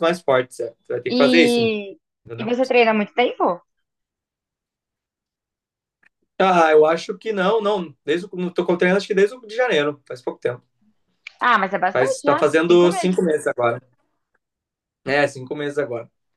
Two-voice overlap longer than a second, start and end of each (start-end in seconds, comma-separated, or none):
11.9-13.2